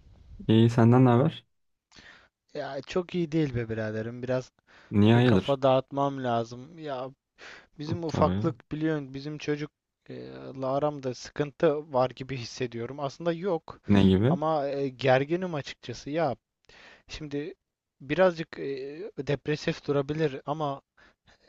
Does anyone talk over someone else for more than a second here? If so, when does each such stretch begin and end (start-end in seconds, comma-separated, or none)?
none